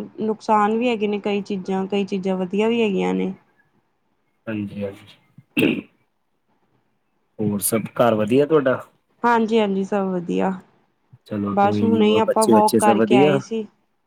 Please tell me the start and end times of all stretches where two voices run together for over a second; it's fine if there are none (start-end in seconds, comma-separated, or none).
11.5-13.4